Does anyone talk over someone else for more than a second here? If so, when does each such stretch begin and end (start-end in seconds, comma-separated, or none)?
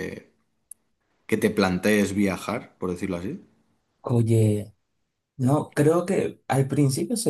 none